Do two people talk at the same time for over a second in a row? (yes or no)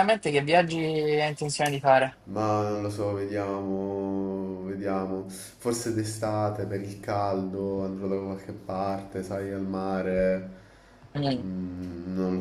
no